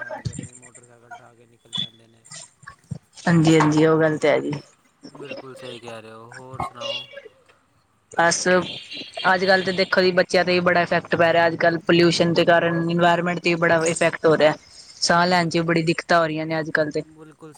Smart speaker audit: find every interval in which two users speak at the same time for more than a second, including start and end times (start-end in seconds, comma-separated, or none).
none